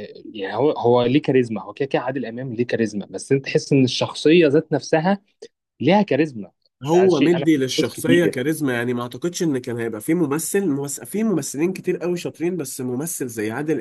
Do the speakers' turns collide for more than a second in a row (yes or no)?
yes